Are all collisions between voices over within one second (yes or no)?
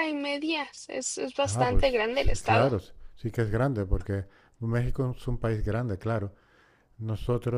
no